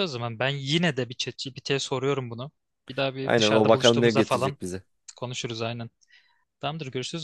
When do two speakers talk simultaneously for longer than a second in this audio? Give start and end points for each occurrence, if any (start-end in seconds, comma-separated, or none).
3.2-4.6